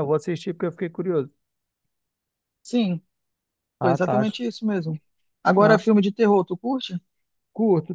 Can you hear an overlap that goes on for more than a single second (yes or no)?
no